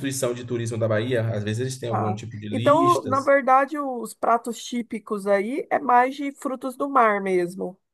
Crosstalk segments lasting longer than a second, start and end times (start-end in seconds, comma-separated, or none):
1.9-3.3